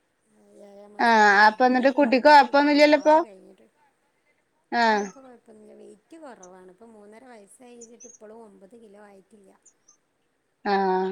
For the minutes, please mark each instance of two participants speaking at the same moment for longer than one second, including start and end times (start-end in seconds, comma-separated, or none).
1.1-3.2